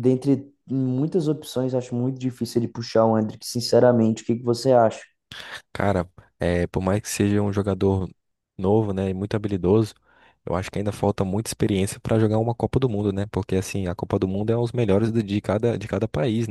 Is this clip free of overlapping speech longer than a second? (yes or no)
yes